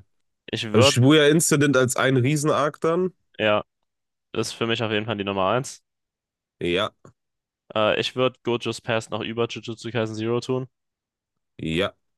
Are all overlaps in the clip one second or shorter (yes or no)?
yes